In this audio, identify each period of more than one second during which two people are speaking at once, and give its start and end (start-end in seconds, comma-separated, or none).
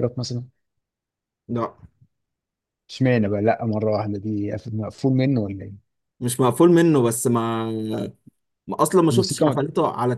none